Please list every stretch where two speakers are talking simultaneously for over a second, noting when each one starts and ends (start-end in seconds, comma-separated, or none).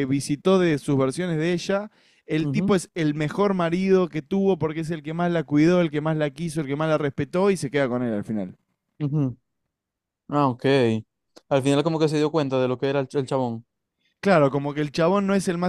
none